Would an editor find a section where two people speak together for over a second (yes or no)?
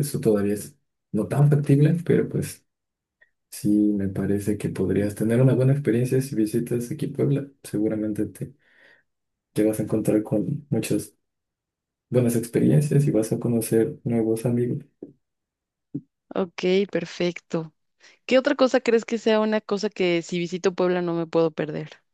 no